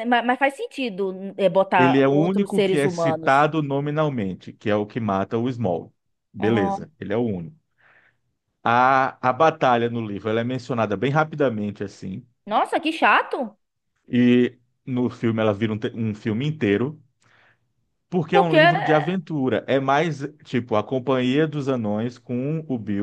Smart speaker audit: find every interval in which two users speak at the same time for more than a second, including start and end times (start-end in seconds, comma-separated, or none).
1.8-3.5